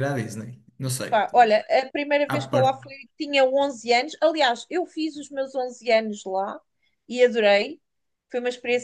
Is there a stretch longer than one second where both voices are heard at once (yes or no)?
no